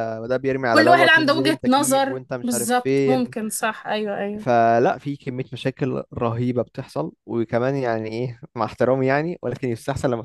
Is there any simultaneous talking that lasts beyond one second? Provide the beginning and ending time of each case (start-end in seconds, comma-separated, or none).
0.7-3.3